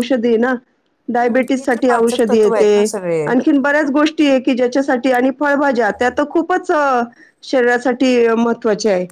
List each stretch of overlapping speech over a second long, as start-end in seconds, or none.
1.2-2.9